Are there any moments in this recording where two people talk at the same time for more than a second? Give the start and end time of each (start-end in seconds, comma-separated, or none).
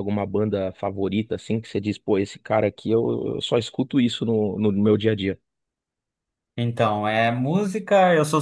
none